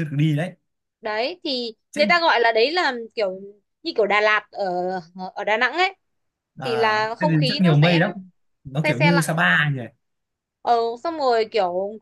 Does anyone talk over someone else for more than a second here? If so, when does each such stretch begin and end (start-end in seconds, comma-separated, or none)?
6.6-8.0